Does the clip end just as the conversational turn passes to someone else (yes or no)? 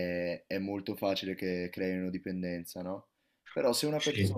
no